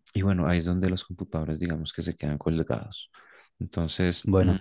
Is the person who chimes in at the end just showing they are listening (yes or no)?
yes